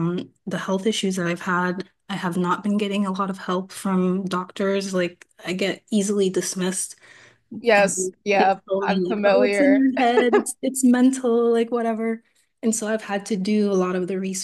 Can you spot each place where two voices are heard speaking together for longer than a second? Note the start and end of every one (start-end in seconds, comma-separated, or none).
7.8-9.8